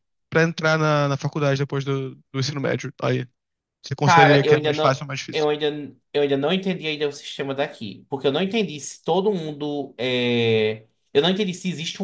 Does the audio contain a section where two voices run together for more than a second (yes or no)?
yes